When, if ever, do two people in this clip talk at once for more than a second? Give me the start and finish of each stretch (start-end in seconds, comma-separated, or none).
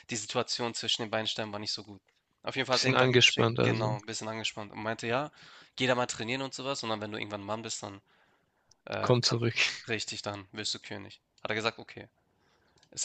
2.7-4.0